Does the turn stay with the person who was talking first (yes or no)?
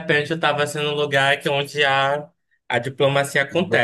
no